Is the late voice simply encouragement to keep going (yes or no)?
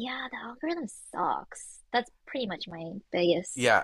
no